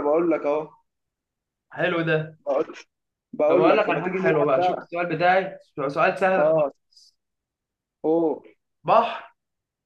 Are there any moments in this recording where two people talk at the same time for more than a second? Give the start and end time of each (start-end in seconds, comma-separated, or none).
3.5-4.9